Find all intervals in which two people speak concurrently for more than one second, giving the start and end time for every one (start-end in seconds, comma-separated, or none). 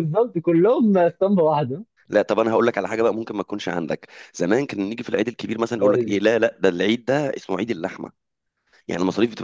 none